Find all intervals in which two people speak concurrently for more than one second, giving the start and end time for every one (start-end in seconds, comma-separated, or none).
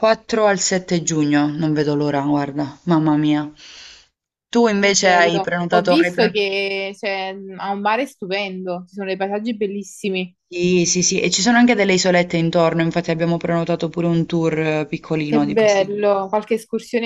4.8-6.4